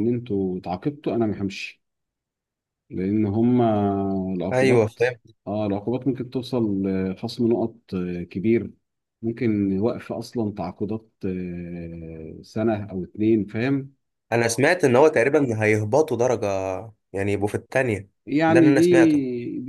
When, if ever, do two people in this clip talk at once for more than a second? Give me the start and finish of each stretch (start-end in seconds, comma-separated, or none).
none